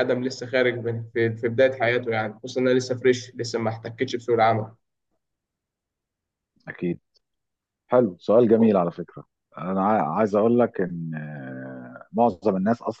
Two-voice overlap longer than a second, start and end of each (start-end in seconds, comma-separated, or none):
none